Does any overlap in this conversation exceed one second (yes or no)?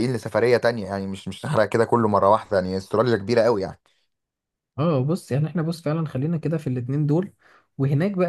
no